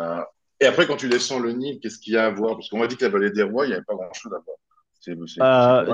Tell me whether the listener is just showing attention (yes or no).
no